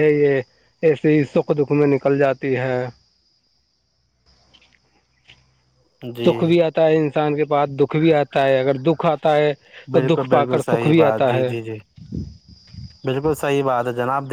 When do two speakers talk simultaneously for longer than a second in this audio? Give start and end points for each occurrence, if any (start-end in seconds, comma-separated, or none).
9.9-11.5